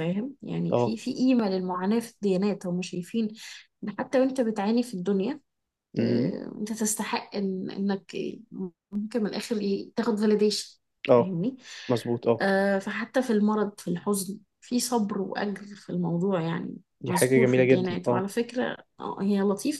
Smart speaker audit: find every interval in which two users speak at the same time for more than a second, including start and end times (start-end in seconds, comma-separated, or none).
17.0-18.2